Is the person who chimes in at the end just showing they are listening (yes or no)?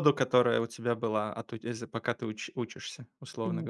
no